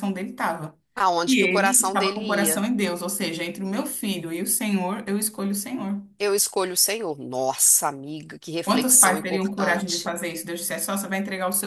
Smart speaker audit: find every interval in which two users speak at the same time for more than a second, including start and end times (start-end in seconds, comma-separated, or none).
1.2-2.6, 8.6-10.1